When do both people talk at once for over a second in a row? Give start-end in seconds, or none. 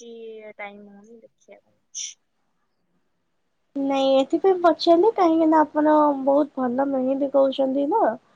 none